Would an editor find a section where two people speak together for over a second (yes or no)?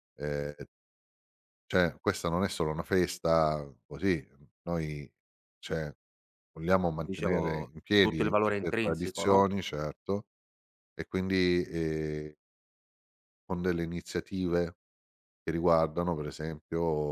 yes